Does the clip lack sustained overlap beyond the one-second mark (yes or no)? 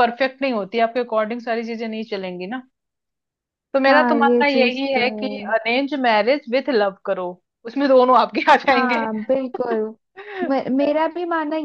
no